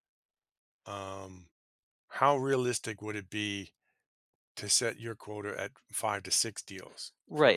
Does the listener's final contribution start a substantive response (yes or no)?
yes